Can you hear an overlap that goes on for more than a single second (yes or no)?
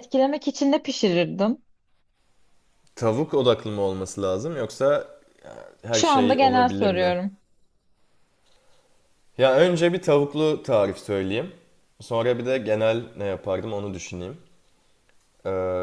yes